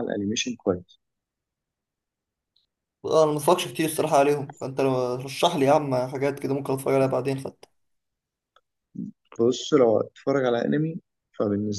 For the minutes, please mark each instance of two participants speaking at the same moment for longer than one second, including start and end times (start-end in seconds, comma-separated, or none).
none